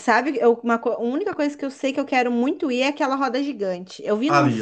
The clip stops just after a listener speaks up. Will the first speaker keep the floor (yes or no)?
yes